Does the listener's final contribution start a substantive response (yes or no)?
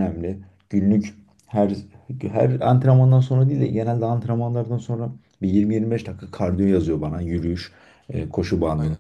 no